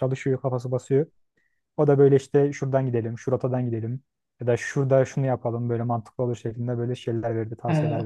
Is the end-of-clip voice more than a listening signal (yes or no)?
yes